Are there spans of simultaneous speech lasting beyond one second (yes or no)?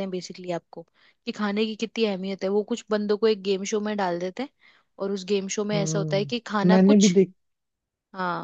yes